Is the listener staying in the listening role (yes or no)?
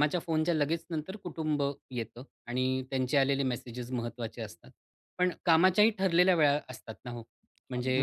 yes